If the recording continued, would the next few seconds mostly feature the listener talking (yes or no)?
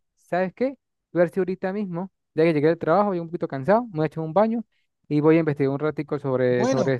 yes